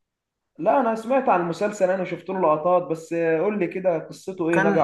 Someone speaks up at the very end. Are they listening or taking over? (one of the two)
taking over